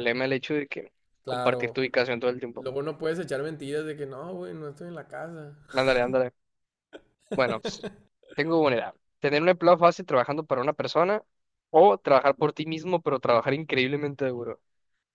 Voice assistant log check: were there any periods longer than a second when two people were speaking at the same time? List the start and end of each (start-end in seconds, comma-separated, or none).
none